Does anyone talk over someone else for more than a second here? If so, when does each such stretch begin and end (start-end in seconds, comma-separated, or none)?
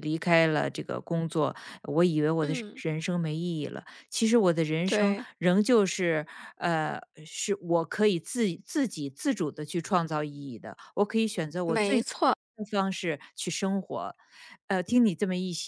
none